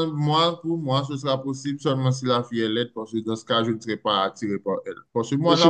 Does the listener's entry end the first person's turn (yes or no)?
no